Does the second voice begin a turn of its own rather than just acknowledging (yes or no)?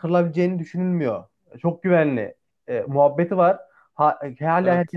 no